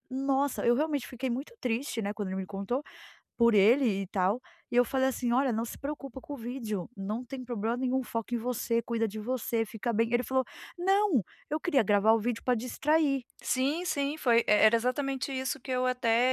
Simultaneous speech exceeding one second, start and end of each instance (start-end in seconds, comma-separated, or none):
none